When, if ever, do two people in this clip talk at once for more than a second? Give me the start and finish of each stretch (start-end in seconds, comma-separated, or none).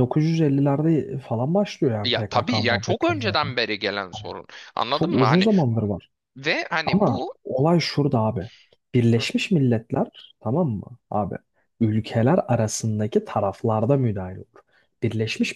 2.0-3.5